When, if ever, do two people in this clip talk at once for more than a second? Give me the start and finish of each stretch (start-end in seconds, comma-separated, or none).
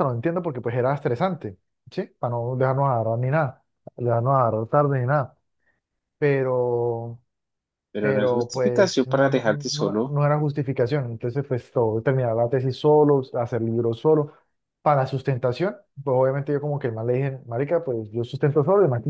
8.0-10.1